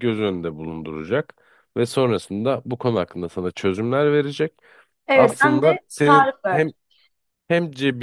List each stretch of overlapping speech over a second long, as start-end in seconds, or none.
5.1-6.7